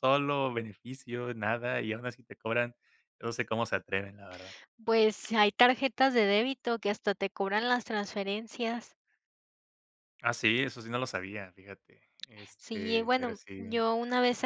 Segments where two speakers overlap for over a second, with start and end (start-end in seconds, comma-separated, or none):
12.6-13.8